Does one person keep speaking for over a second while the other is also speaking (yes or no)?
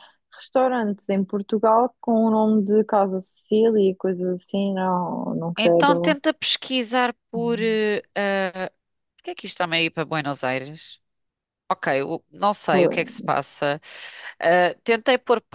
no